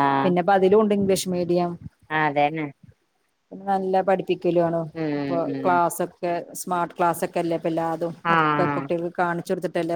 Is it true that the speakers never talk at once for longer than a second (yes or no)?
yes